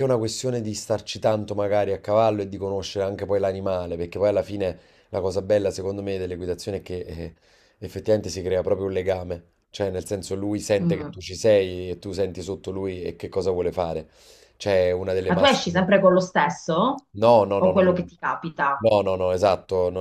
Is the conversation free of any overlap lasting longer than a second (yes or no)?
yes